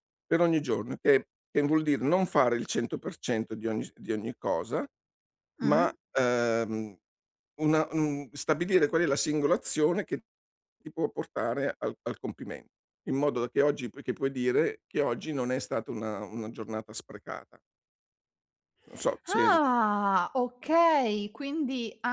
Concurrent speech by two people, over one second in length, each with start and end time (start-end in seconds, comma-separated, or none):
none